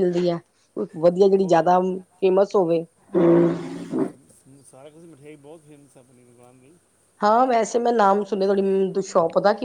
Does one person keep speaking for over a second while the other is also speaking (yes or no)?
no